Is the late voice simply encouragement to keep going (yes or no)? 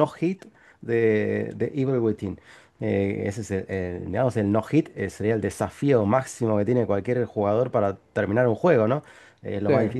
yes